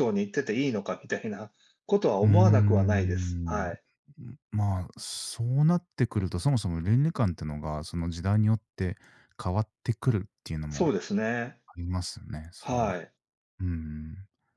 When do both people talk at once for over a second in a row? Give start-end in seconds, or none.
2.2-3.7